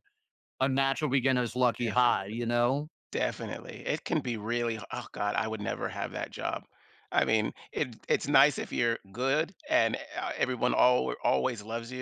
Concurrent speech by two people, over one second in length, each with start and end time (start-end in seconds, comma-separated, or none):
none